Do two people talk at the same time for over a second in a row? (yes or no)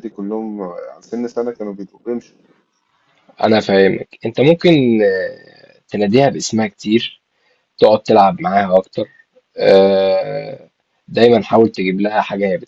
no